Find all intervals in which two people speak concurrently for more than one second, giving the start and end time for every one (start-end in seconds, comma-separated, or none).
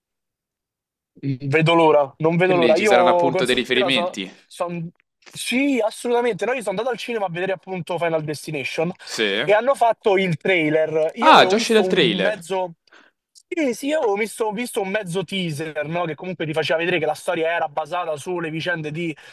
2.4-4.3, 11.2-12.5